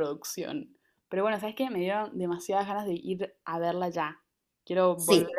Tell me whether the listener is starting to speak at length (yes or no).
yes